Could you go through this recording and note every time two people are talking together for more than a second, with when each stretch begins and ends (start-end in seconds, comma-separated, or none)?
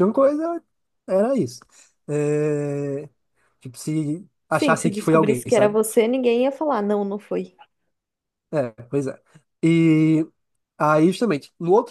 4.5-5.8